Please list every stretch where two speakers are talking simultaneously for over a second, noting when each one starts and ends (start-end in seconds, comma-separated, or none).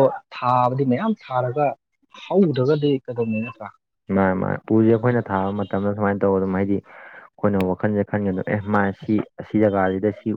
none